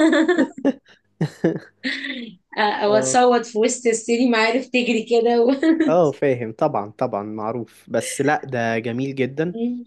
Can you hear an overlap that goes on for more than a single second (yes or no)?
no